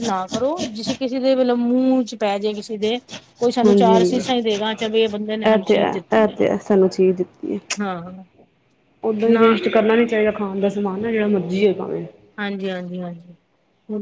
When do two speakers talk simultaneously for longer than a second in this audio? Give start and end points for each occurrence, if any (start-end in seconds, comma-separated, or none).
none